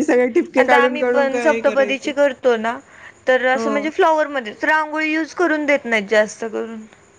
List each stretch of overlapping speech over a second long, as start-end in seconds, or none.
0.6-2.1